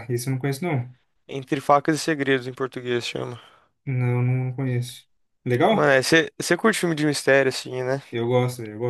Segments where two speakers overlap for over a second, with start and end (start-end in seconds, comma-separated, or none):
none